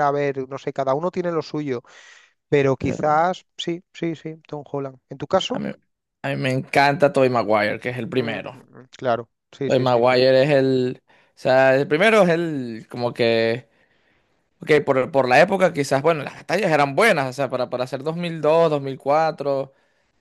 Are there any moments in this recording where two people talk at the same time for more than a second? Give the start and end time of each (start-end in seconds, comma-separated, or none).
none